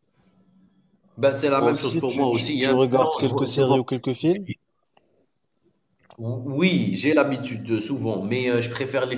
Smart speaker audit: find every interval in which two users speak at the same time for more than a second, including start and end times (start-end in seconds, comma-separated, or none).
1.6-4.5